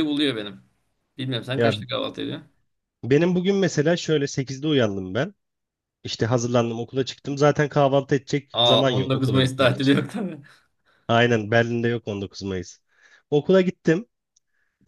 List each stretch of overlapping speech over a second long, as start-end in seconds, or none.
8.5-9.9